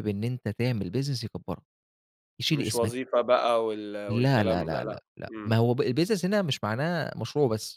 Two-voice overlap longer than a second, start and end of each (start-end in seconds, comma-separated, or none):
4.1-5.6